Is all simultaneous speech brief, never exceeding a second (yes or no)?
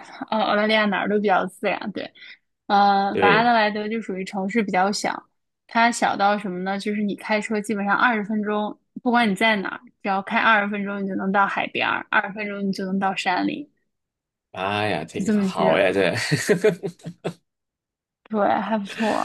yes